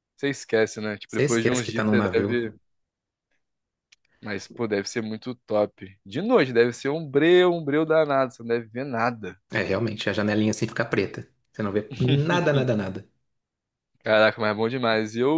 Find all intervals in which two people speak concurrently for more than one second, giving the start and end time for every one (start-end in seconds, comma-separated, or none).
1.1-2.5